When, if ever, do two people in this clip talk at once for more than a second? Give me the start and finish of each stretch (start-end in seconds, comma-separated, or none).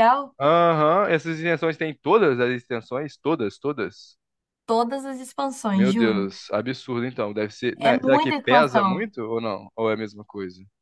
7.8-9.0